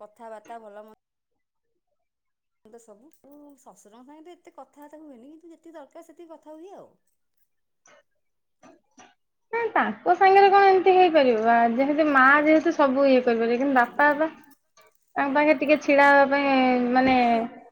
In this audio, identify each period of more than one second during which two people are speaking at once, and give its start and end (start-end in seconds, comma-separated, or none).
none